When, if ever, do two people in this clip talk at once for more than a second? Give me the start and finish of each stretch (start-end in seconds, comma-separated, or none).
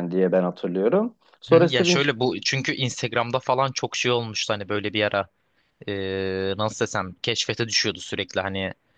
none